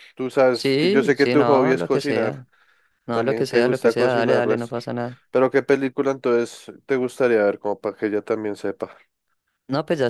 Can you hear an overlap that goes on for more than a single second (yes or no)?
yes